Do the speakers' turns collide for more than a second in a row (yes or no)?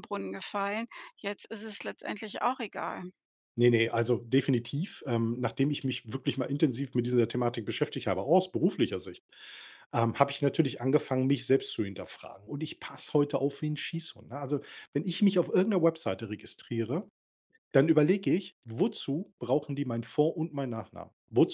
no